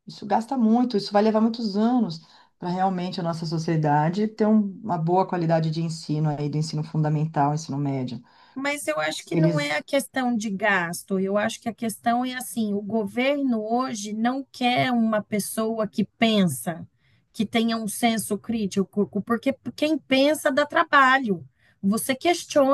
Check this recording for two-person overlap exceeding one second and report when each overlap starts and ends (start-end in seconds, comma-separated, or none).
none